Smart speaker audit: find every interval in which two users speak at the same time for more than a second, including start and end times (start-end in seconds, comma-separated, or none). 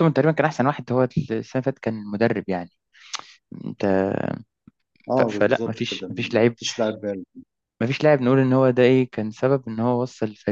5.2-6.6